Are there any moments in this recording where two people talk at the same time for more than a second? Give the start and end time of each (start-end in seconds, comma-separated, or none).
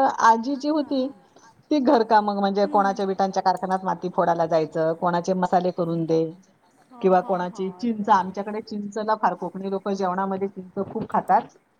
7.0-8.4